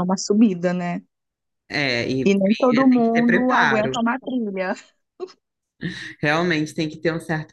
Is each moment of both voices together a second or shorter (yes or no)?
no